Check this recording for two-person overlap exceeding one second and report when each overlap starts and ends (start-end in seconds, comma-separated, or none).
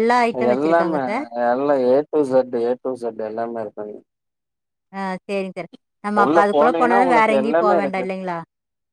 6.2-8.1